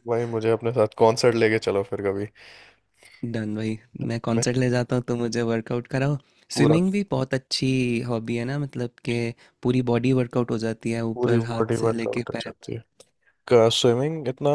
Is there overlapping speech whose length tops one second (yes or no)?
yes